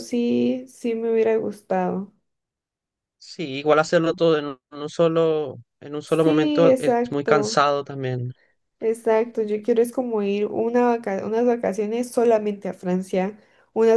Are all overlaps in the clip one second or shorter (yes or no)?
no